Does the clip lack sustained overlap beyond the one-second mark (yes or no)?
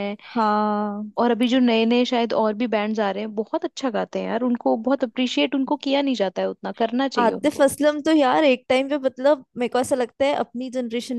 yes